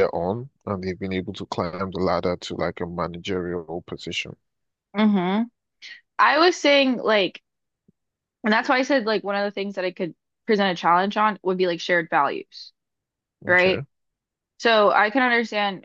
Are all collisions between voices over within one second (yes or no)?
yes